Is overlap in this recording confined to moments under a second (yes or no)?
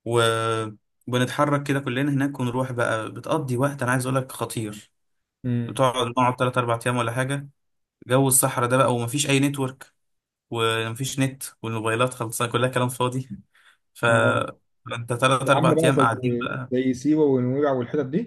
no